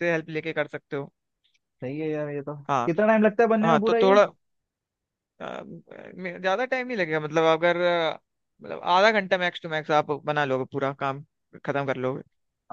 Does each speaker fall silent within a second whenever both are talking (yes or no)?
yes